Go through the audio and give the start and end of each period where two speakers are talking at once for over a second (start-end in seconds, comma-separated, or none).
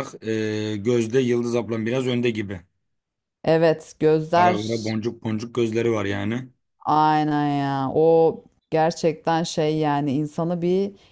none